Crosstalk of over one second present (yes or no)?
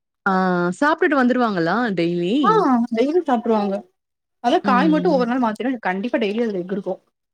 no